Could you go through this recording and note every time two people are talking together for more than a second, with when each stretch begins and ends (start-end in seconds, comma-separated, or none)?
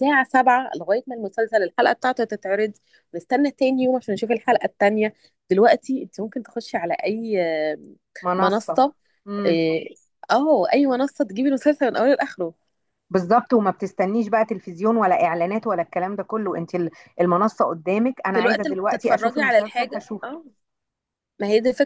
18.3-20.3